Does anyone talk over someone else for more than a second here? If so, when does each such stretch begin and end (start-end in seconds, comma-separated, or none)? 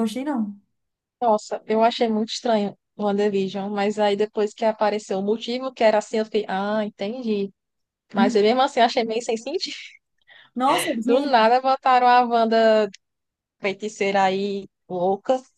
none